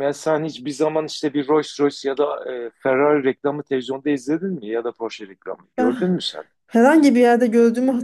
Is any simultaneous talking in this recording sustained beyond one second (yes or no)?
no